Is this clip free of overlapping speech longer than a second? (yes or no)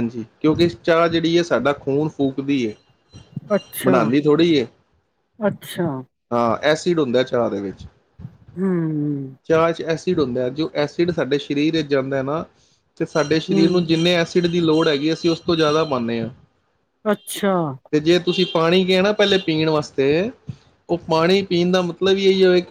yes